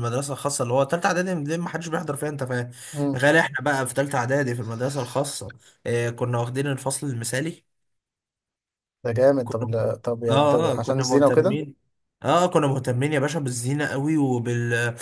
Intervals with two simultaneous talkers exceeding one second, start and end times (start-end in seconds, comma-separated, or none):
10.3-11.6